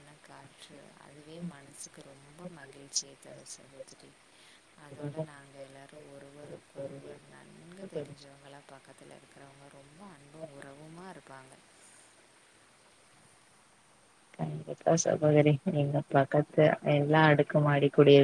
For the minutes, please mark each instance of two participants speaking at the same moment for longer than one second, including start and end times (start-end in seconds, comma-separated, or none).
4.9-8.3